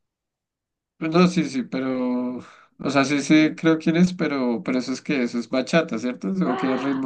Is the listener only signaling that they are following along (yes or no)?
no